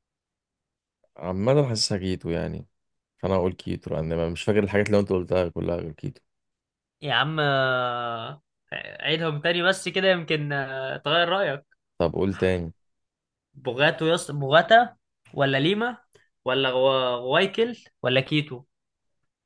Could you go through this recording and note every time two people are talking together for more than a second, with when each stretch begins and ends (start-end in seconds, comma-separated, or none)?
none